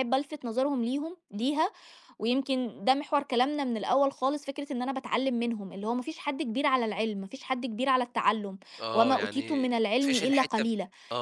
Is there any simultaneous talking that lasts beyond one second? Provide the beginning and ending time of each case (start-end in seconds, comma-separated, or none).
8.9-10.7